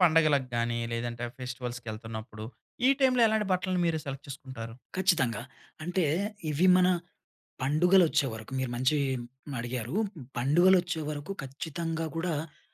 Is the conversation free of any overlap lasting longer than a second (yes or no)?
yes